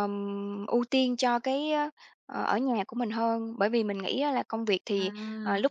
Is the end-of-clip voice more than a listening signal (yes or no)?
no